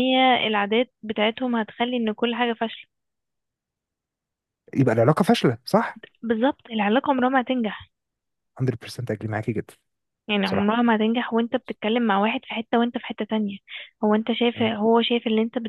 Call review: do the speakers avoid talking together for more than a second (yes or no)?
yes